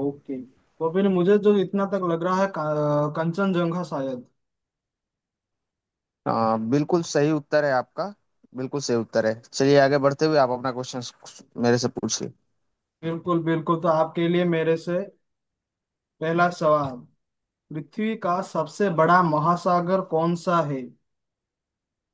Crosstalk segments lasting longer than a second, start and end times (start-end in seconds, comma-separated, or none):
none